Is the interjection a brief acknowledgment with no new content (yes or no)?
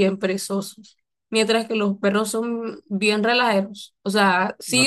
no